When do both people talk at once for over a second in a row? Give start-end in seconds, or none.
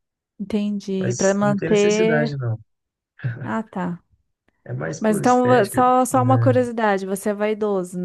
1.0-2.4, 5.0-6.6